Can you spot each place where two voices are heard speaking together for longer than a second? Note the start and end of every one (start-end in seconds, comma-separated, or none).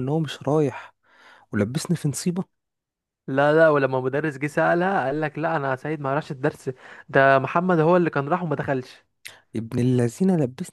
none